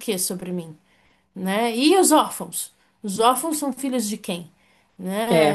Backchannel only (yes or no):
yes